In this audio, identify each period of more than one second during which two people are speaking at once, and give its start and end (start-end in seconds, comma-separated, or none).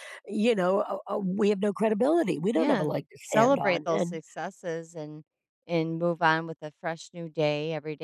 2.5-4.2